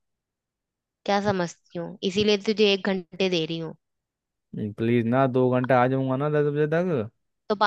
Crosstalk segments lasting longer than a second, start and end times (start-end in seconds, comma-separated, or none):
none